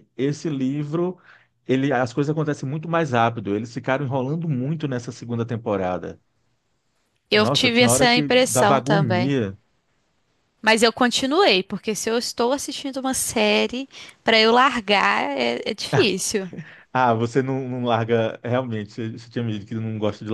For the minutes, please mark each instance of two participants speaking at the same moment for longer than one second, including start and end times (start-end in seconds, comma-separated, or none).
7.3-9.3